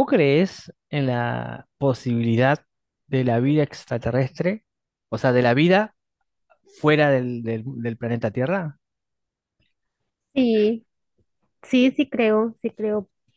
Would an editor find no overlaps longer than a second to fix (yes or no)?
yes